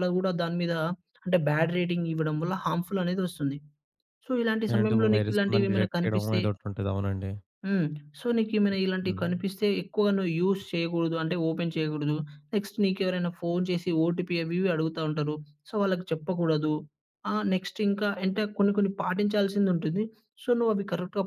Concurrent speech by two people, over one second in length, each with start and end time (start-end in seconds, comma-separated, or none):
4.7-6.4